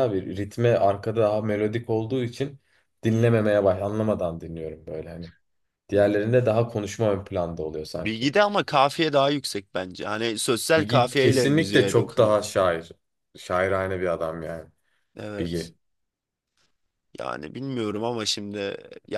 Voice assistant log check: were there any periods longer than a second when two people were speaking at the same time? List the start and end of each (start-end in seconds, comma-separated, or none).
10.8-12.3